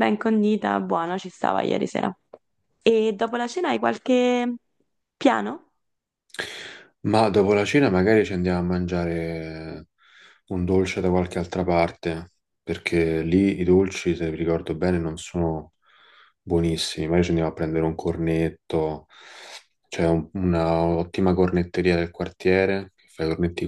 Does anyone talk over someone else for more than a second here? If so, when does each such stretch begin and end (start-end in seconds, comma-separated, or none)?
none